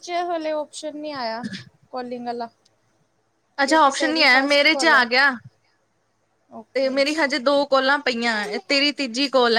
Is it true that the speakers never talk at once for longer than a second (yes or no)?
no